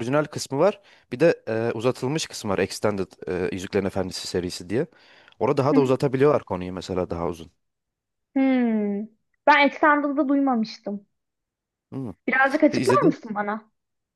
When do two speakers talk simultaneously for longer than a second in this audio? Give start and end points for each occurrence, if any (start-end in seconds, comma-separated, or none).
none